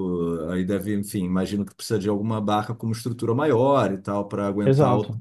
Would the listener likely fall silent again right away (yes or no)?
no